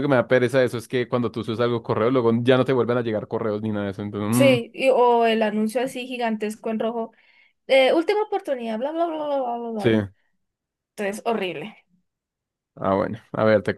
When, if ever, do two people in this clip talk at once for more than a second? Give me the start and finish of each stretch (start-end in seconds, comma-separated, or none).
none